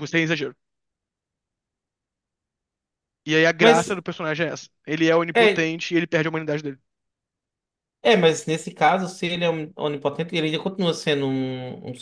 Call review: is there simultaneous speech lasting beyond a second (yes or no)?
no